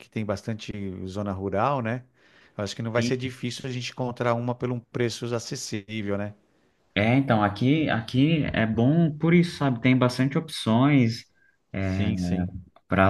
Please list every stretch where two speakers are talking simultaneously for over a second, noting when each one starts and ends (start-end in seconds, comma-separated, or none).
none